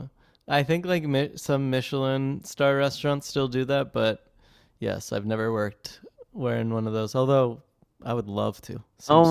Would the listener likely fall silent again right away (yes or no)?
no